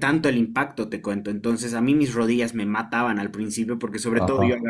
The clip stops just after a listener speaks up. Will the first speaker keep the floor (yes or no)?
yes